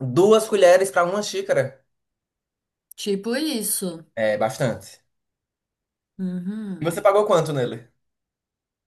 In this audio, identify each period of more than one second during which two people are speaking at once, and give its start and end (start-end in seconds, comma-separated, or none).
none